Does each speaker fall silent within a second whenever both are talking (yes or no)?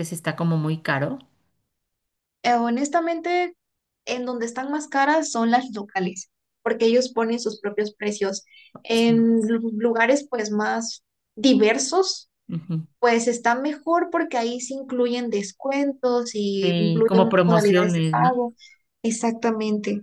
no